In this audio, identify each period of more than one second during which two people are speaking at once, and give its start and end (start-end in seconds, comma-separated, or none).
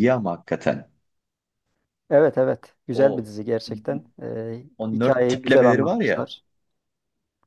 4.8-6.3